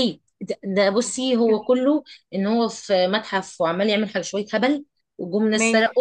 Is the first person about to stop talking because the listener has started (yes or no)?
no